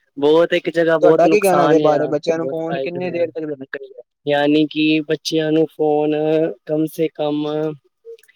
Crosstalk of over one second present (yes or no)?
yes